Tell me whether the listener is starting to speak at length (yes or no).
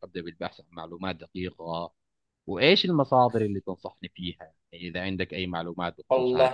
yes